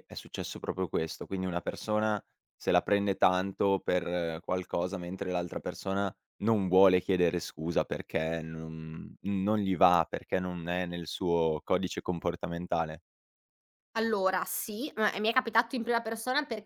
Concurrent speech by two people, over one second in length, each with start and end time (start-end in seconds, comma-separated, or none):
none